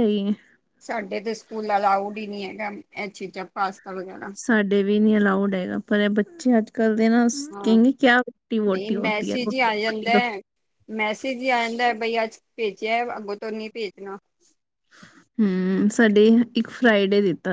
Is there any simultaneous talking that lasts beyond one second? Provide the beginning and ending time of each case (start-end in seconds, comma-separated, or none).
8.7-10.1